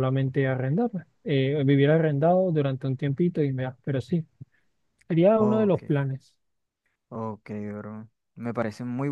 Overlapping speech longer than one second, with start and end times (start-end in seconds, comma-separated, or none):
none